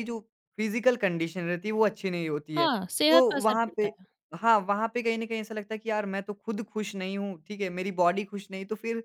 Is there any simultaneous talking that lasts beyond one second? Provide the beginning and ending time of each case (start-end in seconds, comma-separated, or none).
2.5-3.9